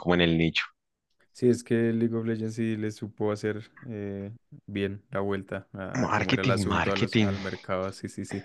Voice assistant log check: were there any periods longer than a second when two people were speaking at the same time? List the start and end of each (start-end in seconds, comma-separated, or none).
6.0-7.3